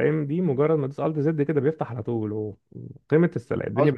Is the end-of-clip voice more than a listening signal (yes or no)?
yes